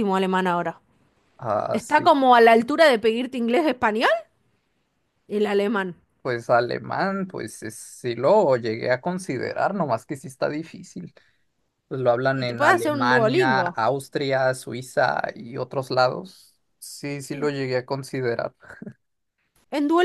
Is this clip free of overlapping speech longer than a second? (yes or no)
no